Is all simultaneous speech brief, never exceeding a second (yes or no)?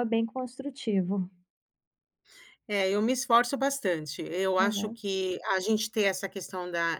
yes